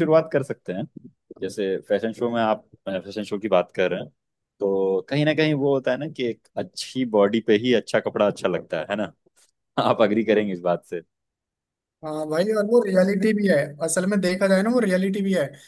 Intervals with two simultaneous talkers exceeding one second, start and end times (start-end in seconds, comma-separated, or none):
none